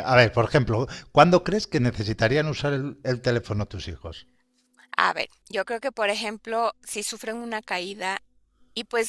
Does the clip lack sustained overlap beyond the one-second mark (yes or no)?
yes